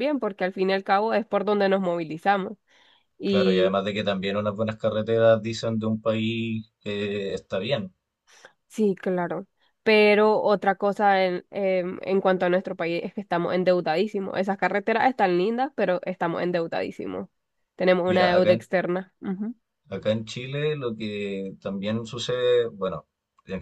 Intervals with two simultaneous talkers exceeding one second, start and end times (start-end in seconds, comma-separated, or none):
none